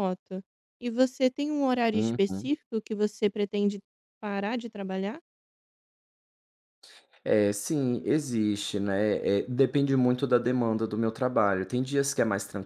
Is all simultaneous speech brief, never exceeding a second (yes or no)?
yes